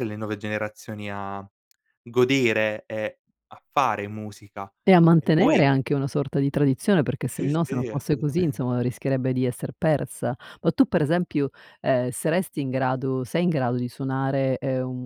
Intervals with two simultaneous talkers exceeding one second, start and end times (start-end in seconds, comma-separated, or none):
7.3-8.8